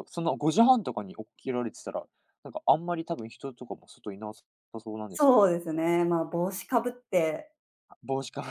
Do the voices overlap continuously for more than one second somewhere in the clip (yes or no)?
no